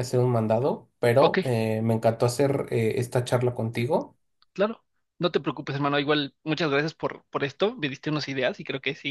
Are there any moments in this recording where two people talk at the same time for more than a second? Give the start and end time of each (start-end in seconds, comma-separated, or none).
none